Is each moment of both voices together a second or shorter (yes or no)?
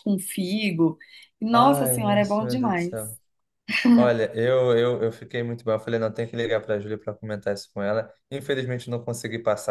no